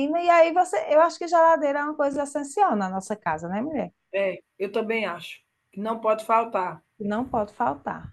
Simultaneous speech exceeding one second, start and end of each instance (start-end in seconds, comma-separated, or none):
none